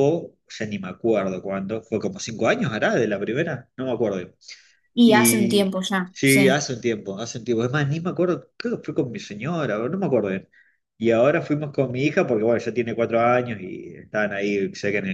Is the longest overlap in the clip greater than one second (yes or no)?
yes